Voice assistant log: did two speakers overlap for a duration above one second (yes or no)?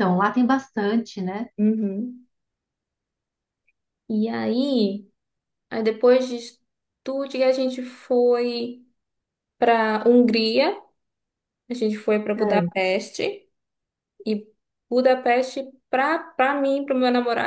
no